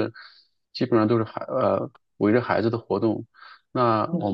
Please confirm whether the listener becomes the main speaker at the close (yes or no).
no